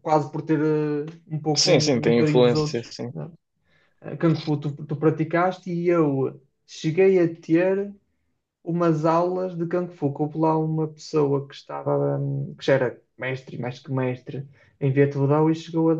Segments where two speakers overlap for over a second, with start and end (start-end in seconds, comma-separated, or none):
1.6-3.1